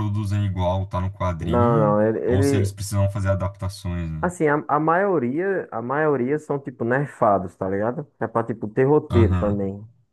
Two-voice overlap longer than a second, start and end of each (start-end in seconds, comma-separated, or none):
1.4-2.8